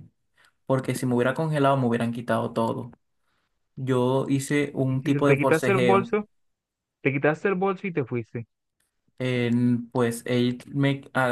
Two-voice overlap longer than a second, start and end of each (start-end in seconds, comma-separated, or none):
4.9-6.1